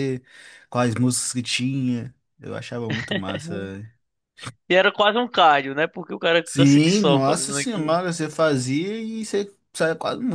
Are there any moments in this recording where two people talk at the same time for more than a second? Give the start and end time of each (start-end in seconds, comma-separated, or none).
6.4-8.0